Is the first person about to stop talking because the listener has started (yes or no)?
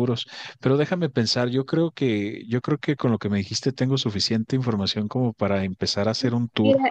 yes